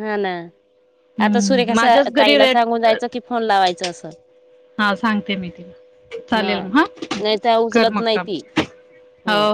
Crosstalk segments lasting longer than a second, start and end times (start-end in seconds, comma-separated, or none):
1.2-3.1